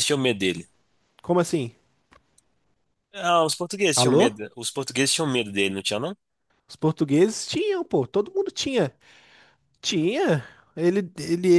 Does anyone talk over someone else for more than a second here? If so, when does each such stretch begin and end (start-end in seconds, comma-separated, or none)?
none